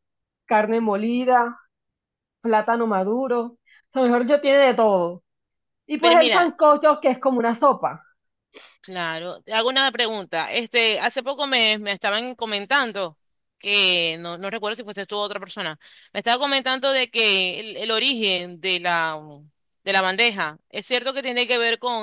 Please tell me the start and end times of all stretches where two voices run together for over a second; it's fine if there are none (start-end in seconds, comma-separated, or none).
none